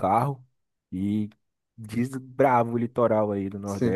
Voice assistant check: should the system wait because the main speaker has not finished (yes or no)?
no